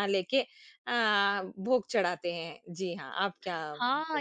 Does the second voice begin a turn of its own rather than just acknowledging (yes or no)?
yes